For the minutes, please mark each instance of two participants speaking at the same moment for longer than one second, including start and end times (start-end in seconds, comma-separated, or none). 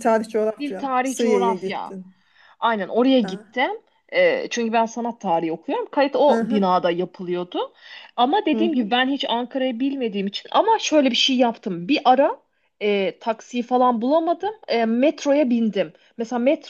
0.6-1.9